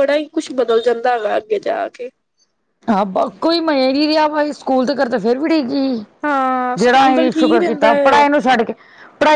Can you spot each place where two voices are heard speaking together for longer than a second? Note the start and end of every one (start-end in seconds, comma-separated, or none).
6.8-8.2